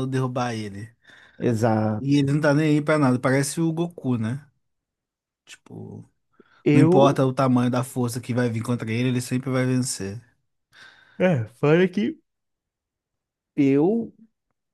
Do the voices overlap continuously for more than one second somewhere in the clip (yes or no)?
no